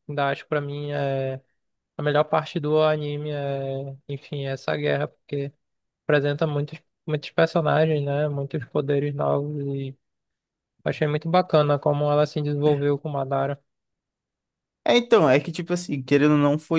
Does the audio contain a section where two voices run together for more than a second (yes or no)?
no